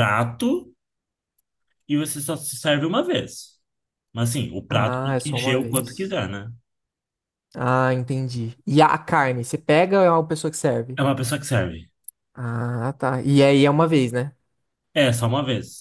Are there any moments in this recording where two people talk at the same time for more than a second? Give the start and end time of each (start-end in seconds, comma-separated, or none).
4.7-6.2